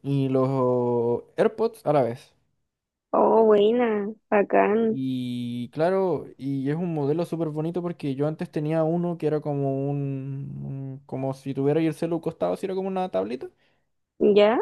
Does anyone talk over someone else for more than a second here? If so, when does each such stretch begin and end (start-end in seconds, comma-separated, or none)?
none